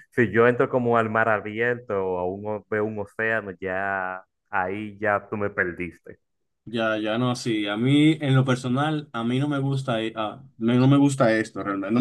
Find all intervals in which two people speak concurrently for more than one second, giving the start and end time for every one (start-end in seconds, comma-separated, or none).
none